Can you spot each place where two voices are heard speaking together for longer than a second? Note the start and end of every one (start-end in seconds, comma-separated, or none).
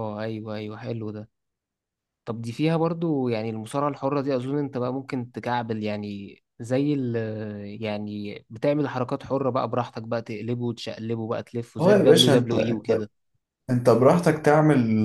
11.8-13.0